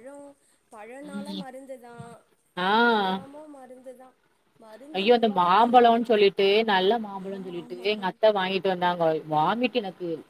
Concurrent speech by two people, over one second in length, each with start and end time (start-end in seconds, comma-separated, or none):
none